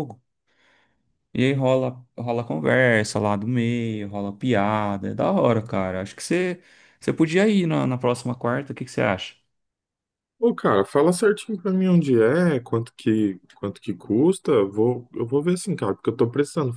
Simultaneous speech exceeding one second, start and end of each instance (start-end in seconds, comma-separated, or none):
none